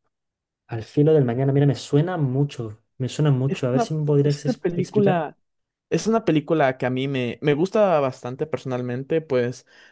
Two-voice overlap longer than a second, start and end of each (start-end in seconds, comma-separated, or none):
3.5-5.3